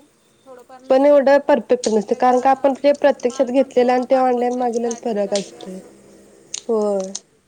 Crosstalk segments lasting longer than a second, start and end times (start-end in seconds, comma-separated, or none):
3.3-5.8